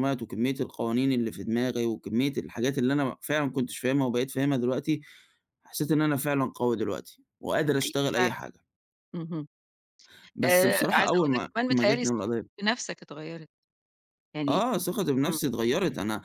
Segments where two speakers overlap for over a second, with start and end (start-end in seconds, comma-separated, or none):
10.5-12.2